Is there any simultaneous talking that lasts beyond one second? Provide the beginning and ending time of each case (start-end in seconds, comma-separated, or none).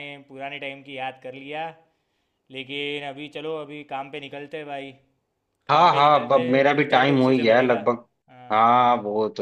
5.7-7.8